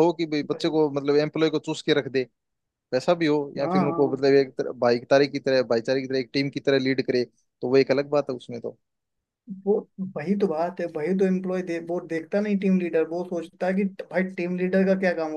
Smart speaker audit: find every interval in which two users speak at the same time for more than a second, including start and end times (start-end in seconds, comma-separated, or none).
none